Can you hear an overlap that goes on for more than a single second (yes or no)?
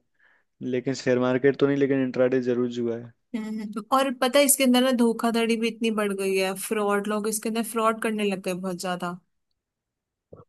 no